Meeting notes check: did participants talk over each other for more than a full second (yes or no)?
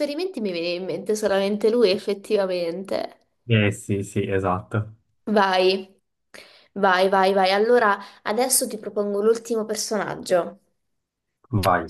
no